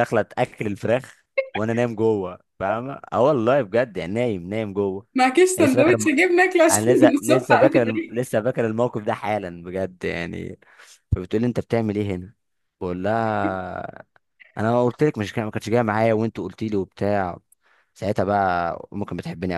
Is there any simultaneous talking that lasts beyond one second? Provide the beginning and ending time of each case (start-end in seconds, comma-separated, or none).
6.7-8.3